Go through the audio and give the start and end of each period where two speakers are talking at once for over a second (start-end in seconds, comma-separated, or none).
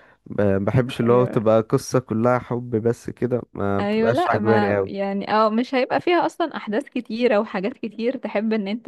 3.8-5.1